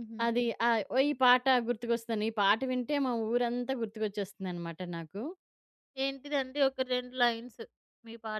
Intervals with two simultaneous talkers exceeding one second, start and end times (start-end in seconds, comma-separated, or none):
none